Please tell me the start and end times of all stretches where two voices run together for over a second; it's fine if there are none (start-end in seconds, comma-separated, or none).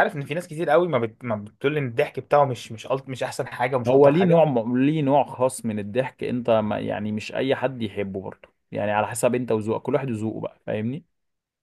none